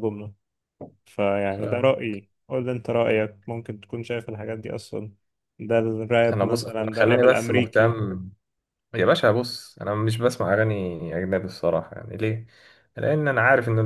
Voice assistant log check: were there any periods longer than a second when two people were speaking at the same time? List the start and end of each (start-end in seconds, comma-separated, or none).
6.3-8.0